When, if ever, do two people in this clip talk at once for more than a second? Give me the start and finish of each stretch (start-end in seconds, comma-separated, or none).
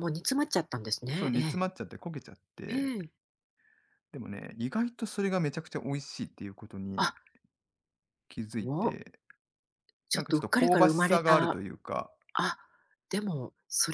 10.1-11.6